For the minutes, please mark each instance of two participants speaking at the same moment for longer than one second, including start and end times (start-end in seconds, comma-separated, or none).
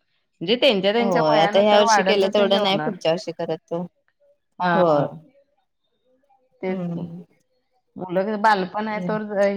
1.0-2.9